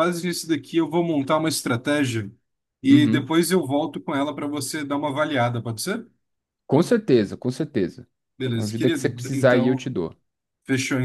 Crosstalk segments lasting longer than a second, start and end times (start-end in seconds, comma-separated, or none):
8.5-9.9